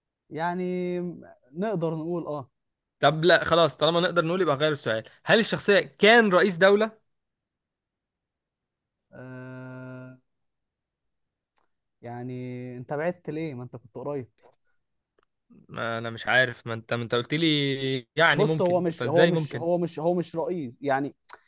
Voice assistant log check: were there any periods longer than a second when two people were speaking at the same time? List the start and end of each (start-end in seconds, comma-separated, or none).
18.3-19.7